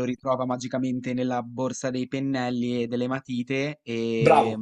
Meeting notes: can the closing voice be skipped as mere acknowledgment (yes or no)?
no